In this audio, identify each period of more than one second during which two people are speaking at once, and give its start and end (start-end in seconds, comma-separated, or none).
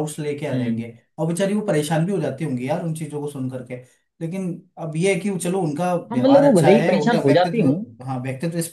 6.1-7.8